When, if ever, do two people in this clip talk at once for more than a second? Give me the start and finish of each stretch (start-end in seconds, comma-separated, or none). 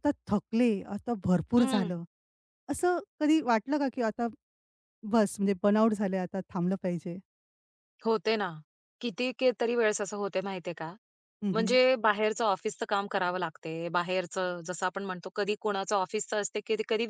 none